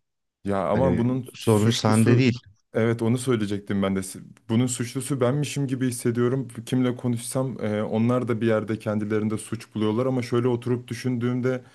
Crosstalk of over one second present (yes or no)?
yes